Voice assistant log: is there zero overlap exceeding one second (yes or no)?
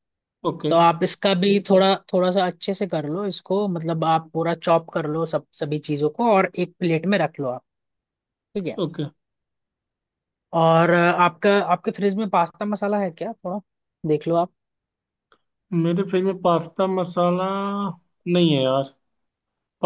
yes